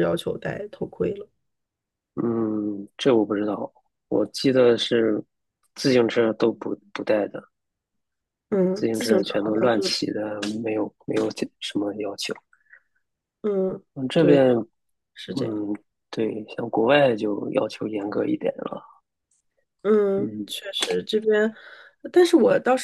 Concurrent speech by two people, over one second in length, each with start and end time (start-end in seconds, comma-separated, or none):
8.8-10.0